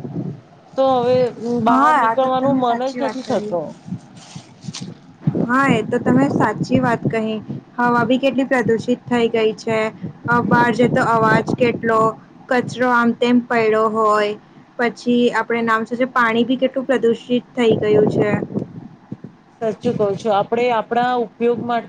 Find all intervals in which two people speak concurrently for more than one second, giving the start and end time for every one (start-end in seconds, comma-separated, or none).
1.7-3.5